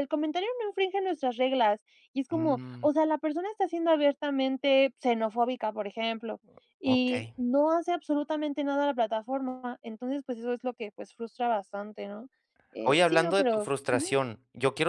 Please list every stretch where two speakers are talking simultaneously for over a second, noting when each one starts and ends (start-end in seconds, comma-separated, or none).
12.8-14.2